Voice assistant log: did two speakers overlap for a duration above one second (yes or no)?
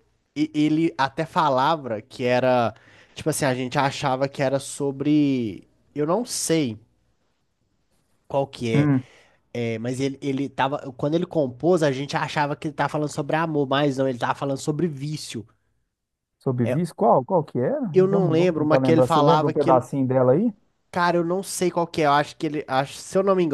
yes